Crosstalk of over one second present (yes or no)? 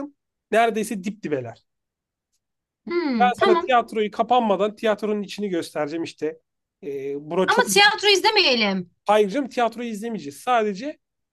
no